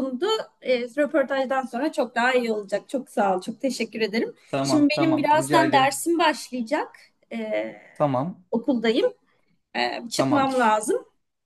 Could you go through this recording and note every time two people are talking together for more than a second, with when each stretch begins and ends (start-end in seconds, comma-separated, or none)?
4.5-6.0